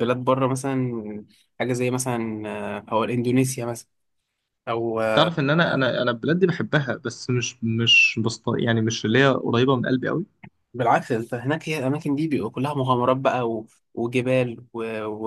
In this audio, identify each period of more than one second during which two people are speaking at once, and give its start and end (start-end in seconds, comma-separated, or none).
none